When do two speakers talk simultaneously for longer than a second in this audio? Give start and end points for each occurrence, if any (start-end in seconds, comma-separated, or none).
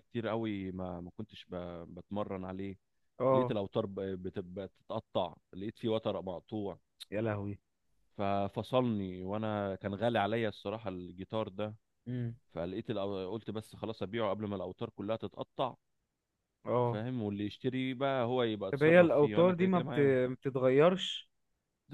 18.7-20.1